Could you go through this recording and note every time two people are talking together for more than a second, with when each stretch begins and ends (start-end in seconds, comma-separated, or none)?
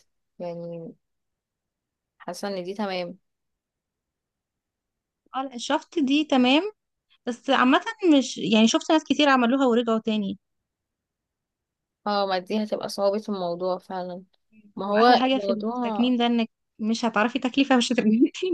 14.8-16.1